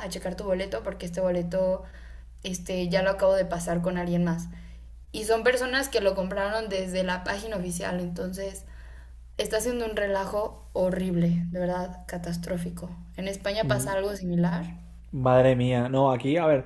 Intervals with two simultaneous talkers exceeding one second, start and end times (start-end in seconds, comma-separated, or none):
none